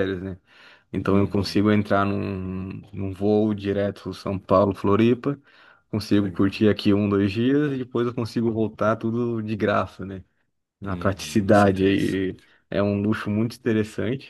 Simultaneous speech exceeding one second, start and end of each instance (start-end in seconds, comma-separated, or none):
10.9-12.5